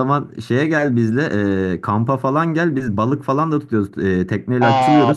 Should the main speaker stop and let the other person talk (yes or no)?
yes